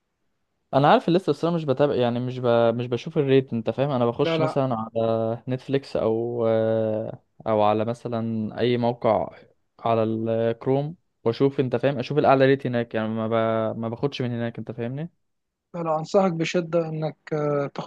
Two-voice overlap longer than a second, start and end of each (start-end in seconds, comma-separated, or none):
none